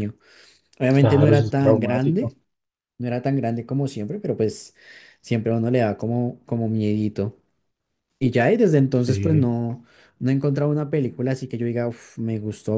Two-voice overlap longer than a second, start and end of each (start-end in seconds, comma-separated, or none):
1.0-2.3